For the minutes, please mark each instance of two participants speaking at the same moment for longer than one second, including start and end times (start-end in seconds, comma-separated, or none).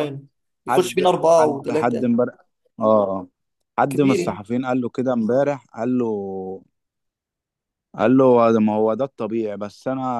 0.7-2.1